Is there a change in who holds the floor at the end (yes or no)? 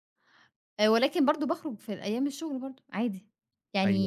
yes